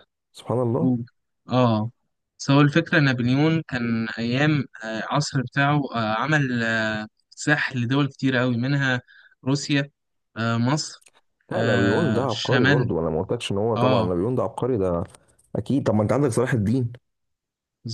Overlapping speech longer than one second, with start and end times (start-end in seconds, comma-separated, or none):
11.5-12.9